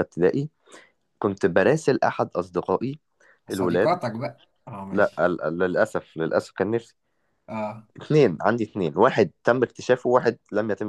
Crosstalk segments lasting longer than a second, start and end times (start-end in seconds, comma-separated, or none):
none